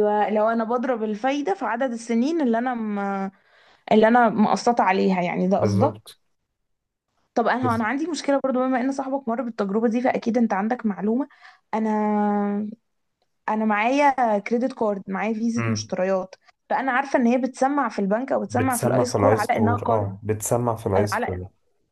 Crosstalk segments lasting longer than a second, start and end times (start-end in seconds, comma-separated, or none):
18.4-20.2